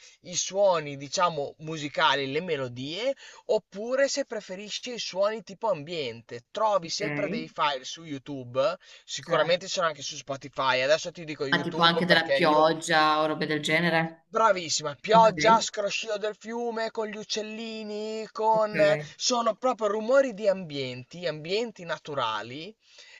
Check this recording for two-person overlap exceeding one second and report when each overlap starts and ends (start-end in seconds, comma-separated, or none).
11.5-12.8